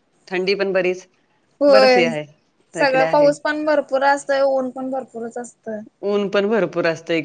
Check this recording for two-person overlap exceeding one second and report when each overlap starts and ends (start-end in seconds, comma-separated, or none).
none